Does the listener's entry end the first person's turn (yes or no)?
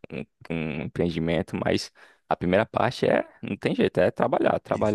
yes